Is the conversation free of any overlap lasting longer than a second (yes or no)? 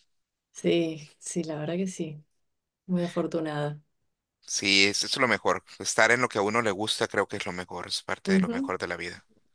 yes